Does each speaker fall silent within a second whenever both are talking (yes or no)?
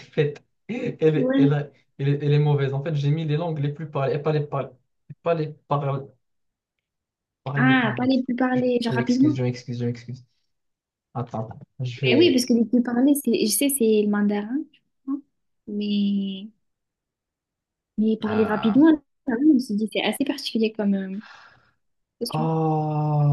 no